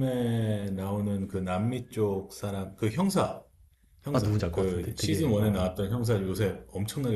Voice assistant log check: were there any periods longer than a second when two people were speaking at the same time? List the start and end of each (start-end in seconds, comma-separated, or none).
4.1-5.7